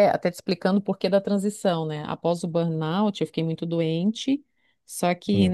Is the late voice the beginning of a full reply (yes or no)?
no